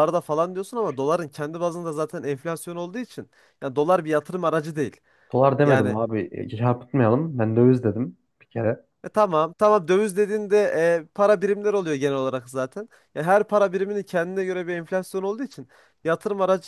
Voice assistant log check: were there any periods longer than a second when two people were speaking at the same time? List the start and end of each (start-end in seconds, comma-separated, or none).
none